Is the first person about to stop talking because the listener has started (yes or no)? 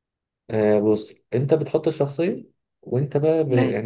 no